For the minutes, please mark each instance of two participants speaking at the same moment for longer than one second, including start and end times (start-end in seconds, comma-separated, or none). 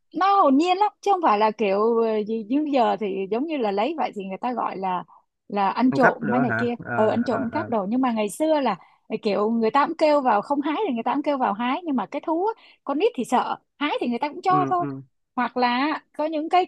5.9-7.7